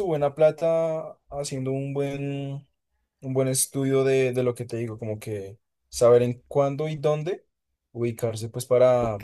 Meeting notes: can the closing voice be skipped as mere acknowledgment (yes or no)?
no